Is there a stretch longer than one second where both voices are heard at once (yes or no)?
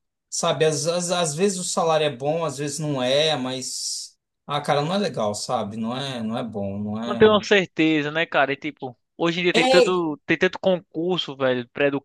no